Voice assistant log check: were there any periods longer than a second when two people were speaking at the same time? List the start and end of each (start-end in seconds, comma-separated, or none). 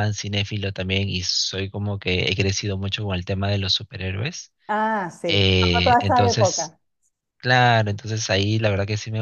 5.3-6.7